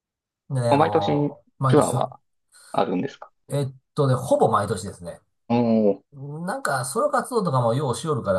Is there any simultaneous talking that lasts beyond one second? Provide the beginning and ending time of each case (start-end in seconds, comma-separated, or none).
0.7-2.1